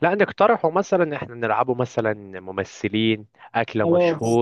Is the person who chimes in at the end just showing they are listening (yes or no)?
no